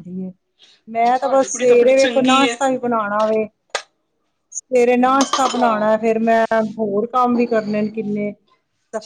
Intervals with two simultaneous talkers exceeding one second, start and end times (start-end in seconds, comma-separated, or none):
1.2-2.5